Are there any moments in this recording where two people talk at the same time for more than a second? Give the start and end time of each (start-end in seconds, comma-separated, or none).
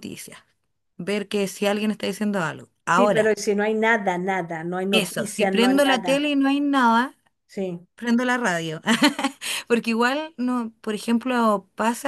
4.9-6.2